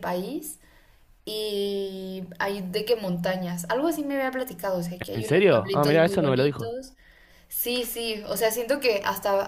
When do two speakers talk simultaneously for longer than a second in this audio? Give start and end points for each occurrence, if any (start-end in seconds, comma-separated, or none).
5.1-6.8